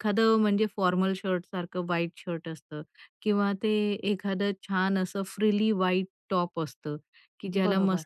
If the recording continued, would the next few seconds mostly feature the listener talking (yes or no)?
no